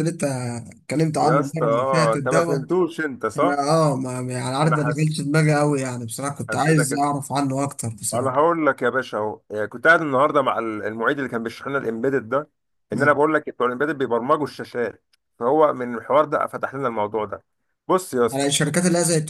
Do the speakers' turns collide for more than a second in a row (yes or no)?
yes